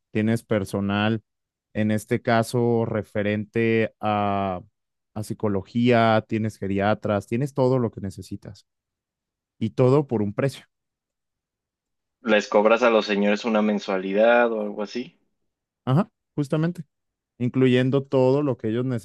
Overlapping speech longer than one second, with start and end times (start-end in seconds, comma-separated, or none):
none